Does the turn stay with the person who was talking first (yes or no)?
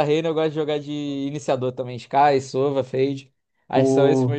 no